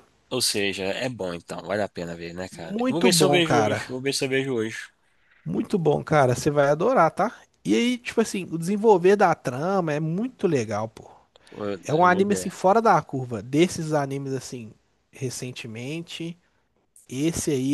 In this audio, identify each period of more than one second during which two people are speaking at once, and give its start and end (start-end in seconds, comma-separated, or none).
2.5-4.0